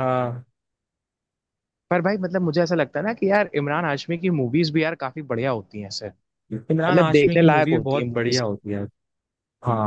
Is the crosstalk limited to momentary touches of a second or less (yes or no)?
no